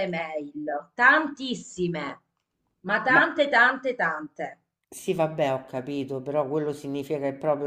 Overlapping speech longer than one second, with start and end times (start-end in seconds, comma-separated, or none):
none